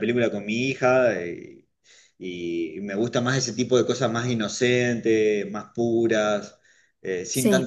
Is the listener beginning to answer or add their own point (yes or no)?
no